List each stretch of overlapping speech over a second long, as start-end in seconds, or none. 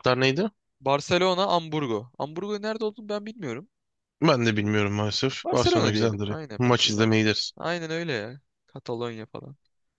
5.4-7.2